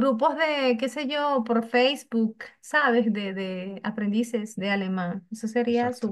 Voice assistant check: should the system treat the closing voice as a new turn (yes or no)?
no